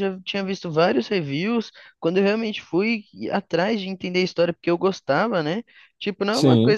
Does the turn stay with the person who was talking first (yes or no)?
yes